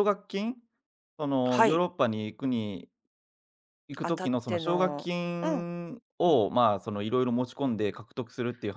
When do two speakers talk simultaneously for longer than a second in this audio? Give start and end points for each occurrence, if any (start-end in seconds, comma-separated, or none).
4.0-5.7